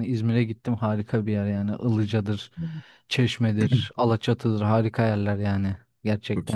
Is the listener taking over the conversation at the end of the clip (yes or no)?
yes